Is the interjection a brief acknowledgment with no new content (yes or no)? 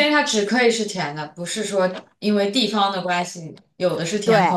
no